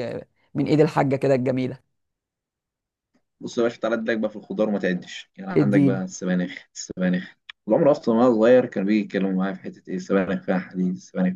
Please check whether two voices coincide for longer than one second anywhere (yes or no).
no